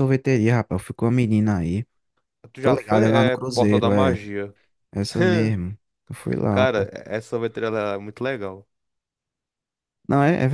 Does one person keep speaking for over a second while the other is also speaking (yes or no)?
yes